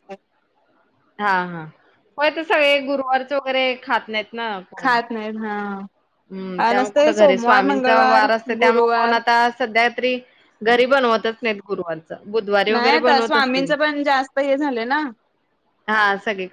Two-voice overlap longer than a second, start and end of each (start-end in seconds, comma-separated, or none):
6.6-9.2